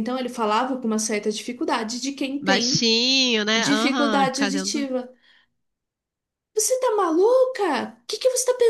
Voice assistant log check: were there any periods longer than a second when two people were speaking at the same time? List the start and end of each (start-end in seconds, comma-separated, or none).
3.5-4.9